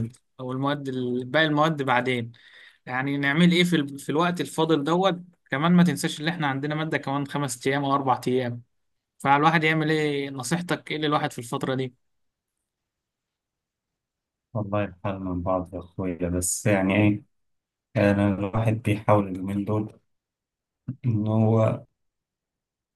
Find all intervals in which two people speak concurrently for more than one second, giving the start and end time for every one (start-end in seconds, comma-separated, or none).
none